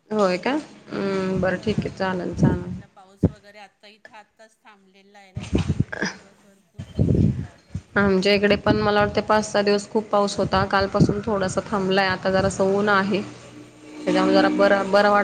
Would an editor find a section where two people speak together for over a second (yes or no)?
no